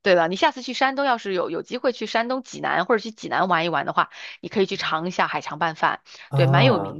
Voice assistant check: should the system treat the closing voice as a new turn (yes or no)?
no